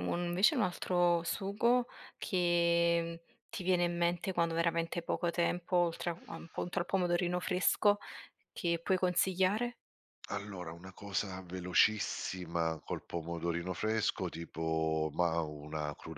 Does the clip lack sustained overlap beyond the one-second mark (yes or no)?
yes